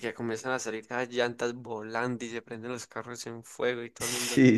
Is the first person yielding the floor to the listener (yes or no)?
yes